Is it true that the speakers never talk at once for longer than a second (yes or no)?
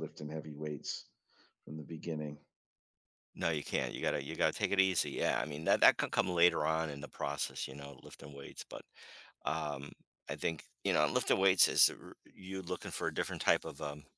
yes